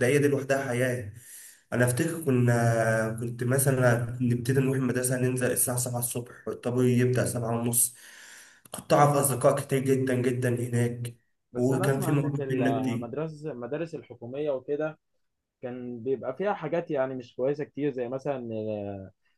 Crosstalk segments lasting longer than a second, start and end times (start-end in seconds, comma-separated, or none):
11.6-13.1